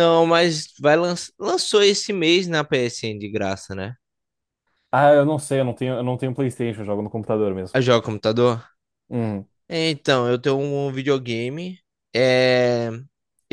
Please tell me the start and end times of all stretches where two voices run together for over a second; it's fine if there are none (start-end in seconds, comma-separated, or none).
none